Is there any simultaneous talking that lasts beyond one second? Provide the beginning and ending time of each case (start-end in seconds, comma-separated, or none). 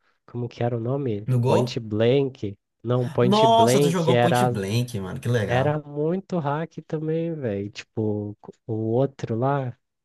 3.2-4.6